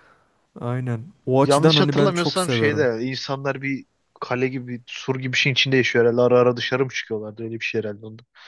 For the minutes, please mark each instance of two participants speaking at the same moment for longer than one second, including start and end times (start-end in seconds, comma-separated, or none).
1.4-2.9